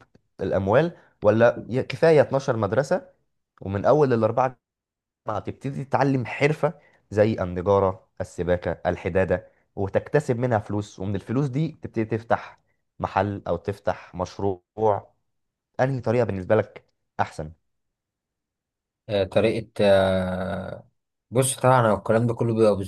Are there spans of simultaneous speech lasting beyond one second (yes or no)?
no